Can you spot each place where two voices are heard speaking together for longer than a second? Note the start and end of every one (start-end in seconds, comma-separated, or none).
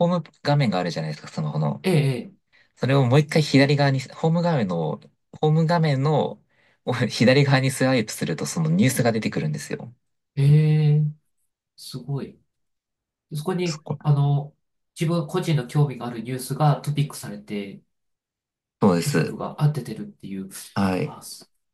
none